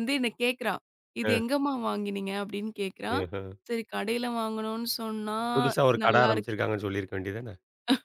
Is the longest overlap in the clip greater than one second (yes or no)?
no